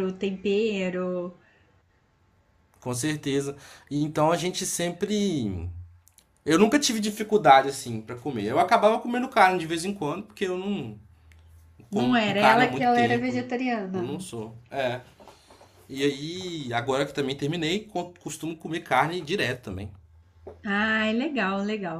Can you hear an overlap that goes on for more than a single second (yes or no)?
yes